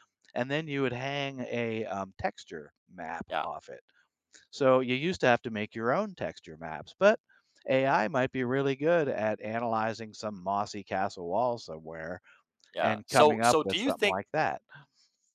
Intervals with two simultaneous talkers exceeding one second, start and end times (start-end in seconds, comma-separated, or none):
12.8-14.2